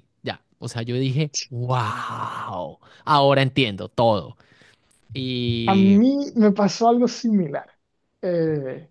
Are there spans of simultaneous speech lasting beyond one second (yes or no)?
no